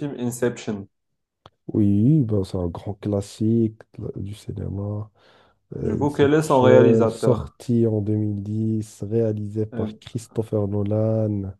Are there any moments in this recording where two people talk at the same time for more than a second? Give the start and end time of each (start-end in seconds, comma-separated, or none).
5.8-7.6